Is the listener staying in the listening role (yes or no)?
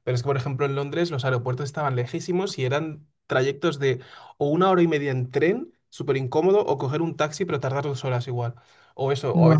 yes